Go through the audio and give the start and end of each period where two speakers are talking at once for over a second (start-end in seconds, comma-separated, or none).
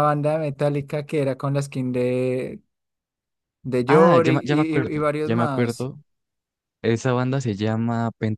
3.9-5.9